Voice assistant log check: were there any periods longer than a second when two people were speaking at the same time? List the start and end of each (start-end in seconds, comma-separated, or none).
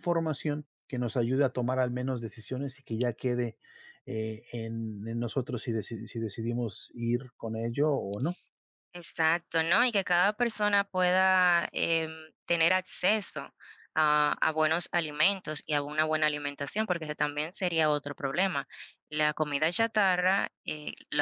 none